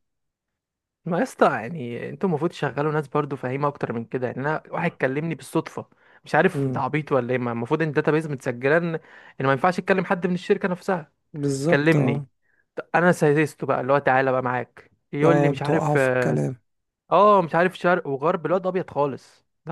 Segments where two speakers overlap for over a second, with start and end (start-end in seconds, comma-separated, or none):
15.2-16.4